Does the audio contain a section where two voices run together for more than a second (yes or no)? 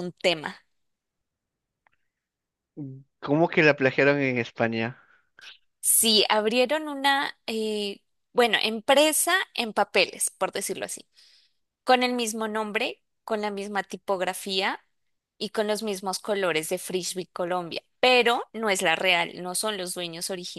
no